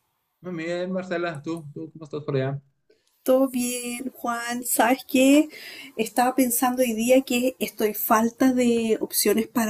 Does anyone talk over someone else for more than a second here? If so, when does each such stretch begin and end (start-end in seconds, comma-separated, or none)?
none